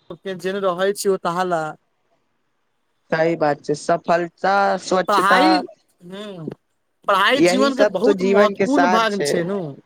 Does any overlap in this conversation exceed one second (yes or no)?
yes